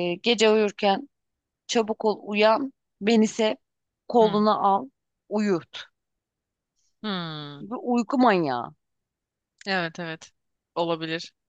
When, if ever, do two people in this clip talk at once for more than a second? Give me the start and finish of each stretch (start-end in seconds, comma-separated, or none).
none